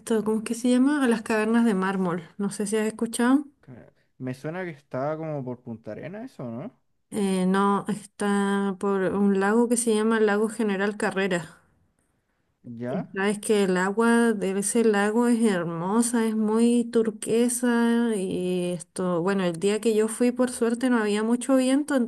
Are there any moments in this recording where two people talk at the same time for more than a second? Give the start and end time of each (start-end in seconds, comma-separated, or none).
none